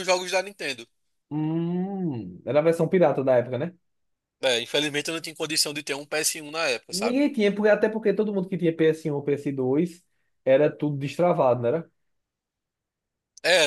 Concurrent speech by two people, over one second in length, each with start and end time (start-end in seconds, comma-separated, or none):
none